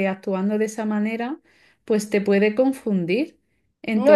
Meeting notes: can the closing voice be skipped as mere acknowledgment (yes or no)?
yes